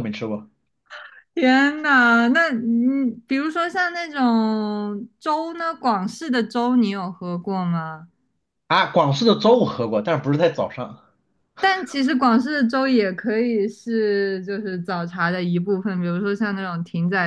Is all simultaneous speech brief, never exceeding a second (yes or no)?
yes